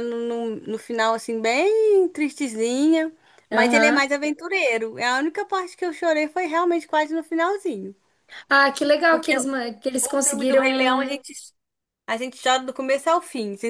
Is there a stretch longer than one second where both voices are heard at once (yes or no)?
yes